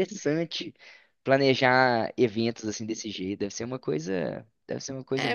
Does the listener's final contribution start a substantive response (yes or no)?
yes